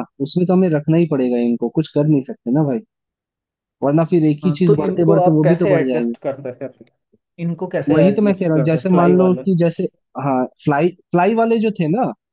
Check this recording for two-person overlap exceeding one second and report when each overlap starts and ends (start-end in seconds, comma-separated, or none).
4.4-6.1, 7.9-9.4